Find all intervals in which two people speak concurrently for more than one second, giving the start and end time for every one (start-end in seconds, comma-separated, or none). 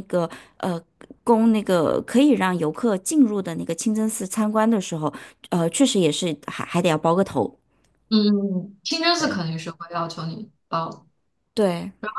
none